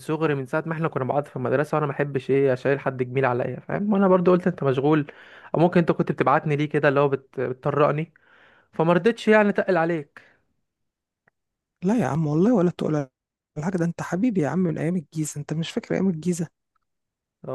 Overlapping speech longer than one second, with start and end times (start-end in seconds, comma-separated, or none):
none